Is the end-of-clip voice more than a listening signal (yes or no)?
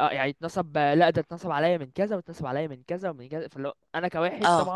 no